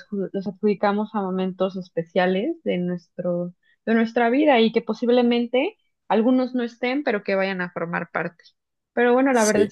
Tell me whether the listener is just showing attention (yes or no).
yes